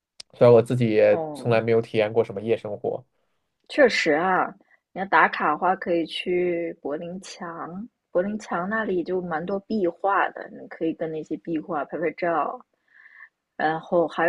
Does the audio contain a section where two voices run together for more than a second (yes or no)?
no